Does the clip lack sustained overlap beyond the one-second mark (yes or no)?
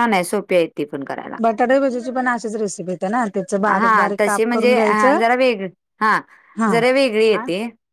no